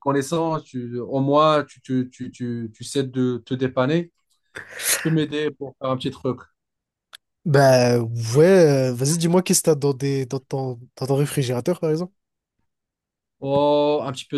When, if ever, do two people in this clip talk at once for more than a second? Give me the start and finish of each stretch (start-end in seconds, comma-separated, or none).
none